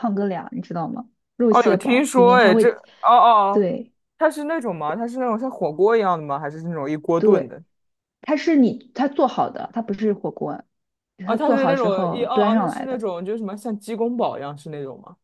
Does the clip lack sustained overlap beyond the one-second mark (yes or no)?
no